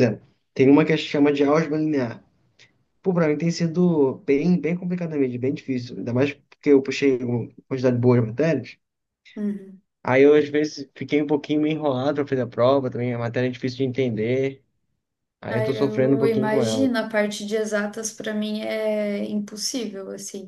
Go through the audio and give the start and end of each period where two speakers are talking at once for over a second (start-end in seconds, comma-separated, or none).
15.5-16.9